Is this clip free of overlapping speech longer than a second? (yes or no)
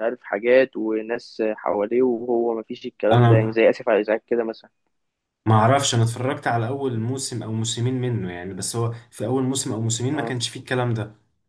yes